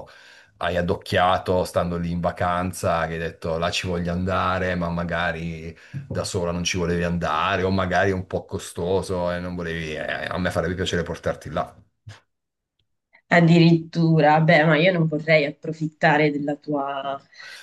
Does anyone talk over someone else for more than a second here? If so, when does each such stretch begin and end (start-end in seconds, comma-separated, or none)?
none